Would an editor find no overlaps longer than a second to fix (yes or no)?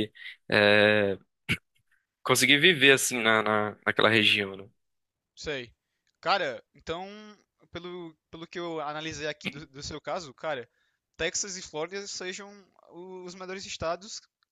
yes